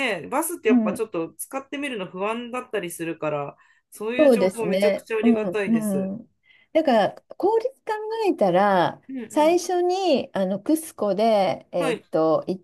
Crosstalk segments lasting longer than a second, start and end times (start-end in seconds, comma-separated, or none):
4.2-6.1